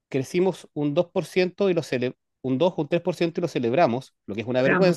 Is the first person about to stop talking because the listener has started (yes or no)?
no